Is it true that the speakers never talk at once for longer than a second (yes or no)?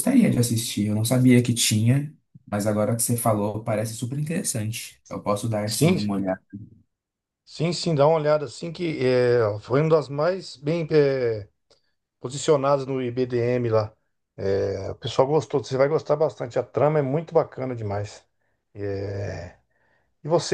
yes